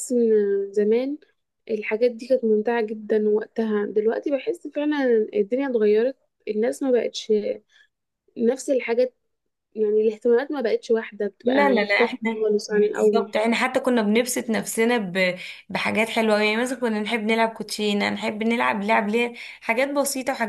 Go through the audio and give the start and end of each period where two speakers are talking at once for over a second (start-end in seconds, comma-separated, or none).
11.4-13.3